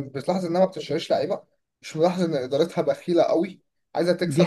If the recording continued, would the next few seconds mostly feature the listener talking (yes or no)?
yes